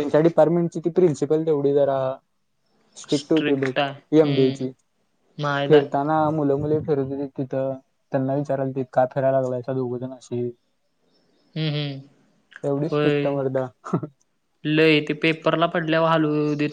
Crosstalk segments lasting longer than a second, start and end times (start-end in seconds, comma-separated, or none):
3.2-4.7